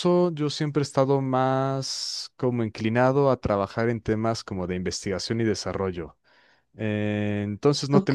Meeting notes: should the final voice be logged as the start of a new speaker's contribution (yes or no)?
no